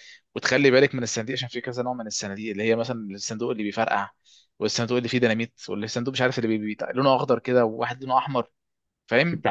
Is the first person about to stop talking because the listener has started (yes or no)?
yes